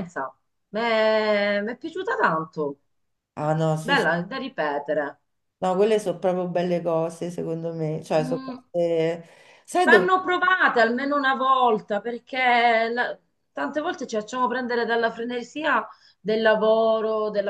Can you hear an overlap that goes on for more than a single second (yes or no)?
no